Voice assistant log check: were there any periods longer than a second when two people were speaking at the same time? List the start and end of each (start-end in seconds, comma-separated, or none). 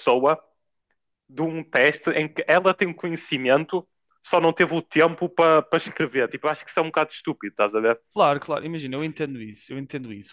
none